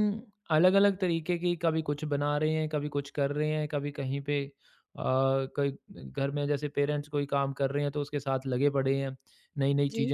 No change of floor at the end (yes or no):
yes